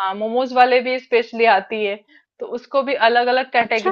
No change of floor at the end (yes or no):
yes